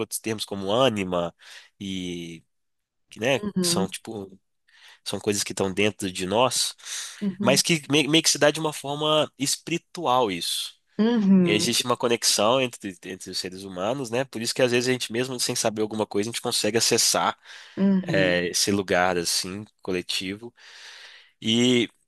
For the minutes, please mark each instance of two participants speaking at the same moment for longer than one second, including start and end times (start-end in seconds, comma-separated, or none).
none